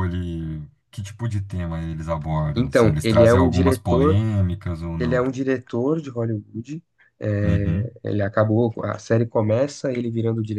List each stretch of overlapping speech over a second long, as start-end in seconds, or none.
2.5-4.2